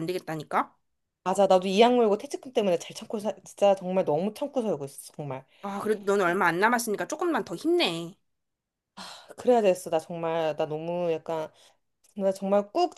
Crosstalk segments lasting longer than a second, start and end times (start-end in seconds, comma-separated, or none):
none